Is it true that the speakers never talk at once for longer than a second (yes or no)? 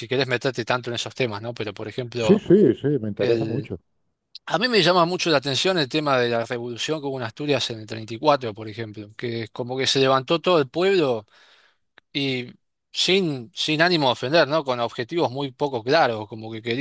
yes